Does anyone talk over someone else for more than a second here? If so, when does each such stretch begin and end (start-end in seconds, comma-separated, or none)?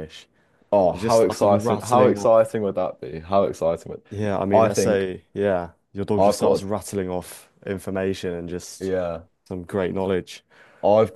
0.8-2.3